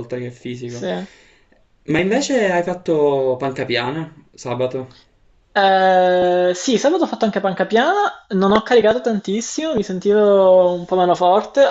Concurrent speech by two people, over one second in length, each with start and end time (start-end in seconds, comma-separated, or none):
none